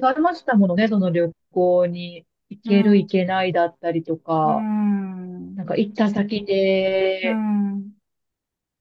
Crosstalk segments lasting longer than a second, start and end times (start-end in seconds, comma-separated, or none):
none